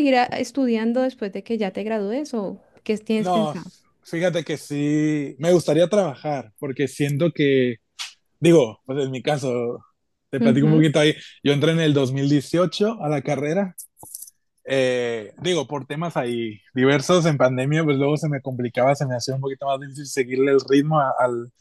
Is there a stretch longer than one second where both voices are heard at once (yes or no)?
no